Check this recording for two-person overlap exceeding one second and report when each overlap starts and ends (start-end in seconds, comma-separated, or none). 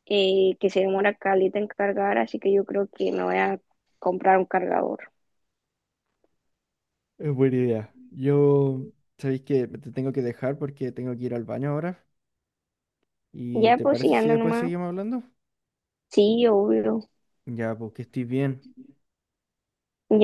13.5-14.7